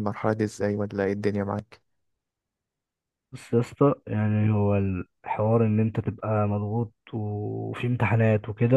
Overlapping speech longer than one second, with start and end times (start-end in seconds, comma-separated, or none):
none